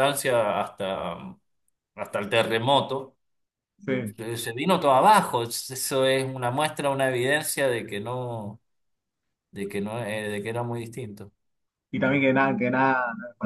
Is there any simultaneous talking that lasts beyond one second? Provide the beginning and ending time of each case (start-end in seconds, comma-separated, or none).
none